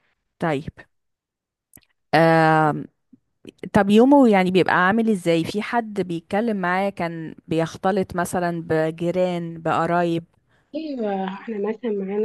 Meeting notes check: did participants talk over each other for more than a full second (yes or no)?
no